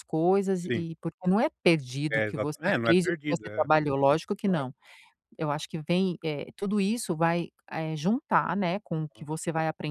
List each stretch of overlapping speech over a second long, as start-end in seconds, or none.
2.1-3.7